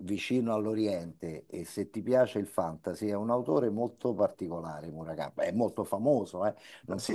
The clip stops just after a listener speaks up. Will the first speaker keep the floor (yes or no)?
no